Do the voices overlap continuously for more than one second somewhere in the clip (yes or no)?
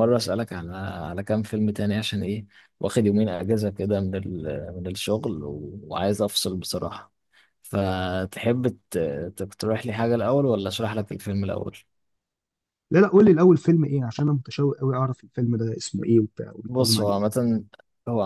no